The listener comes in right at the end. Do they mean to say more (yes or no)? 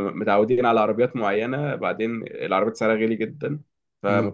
no